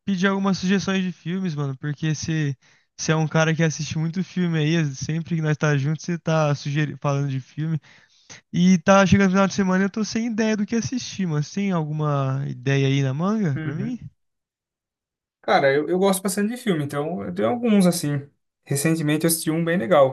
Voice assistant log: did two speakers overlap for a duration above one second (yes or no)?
no